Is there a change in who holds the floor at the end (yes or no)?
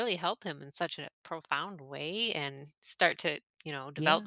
no